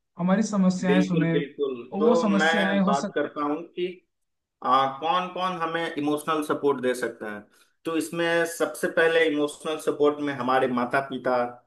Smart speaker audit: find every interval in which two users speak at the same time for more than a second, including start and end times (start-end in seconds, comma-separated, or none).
0.8-3.1